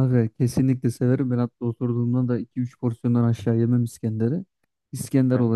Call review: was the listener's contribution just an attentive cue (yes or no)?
yes